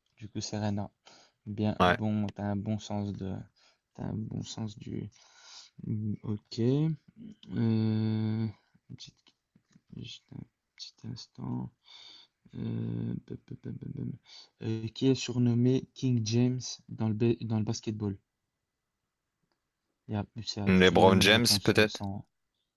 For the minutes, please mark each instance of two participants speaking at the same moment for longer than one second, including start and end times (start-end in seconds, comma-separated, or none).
20.7-22.0